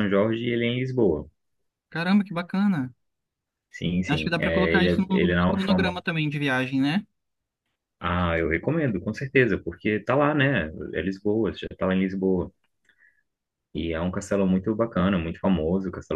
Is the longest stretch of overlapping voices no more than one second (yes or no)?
no